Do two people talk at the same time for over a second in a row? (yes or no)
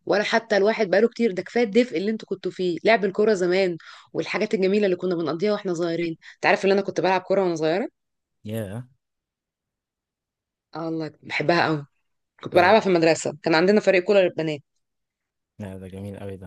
no